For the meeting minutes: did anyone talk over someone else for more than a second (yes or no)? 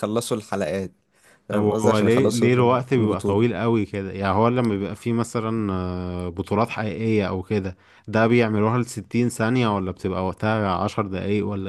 yes